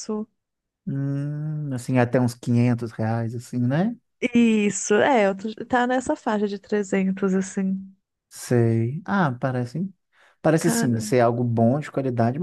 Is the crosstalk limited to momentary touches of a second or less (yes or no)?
yes